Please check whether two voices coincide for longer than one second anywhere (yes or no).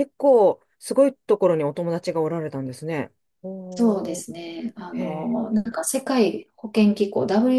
no